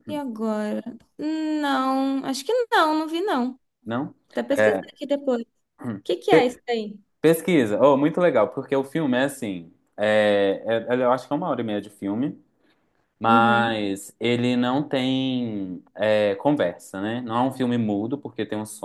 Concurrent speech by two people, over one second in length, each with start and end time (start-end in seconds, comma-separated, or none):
none